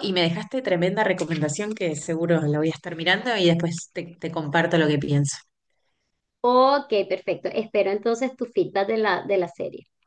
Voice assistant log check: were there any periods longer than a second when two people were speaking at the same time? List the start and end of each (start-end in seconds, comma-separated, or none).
none